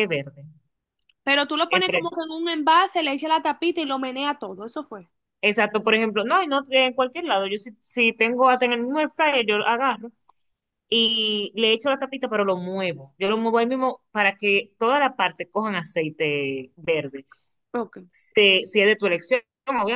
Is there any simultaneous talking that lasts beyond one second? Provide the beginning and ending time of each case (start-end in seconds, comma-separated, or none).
none